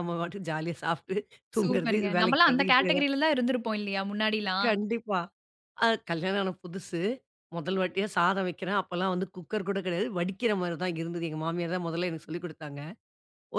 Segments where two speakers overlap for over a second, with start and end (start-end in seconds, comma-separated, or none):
1.6-3.1